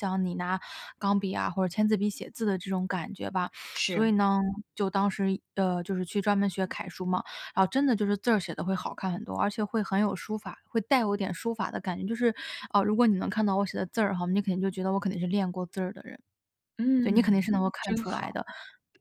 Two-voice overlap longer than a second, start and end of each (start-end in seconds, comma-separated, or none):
17.0-18.4